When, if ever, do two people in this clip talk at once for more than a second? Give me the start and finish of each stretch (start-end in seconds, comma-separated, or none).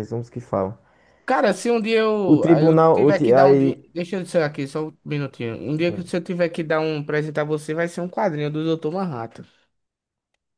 2.2-3.8